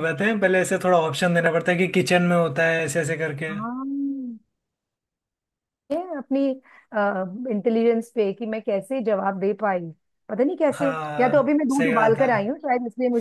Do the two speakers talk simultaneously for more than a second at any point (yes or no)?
yes